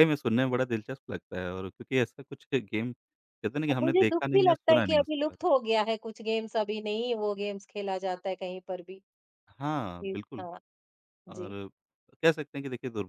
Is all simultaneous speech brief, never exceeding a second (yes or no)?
no